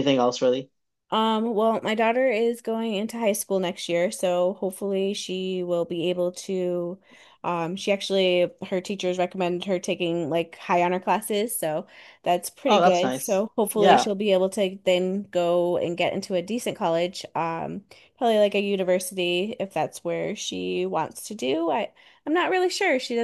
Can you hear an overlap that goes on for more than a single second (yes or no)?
yes